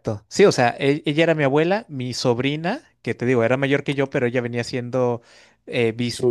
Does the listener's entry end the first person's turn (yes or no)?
no